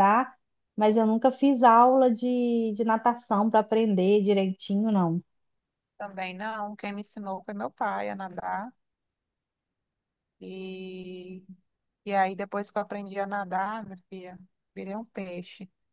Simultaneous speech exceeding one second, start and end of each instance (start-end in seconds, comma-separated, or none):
none